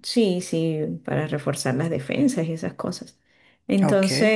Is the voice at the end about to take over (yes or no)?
no